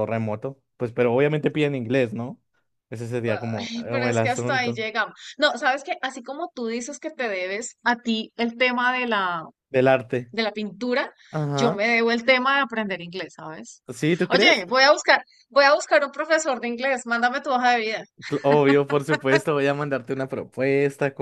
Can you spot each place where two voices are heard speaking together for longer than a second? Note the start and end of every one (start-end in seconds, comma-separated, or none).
3.6-4.8